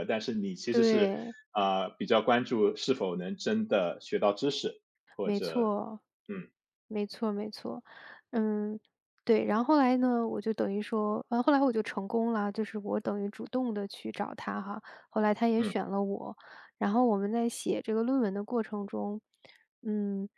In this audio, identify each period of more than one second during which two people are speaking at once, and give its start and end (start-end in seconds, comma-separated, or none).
none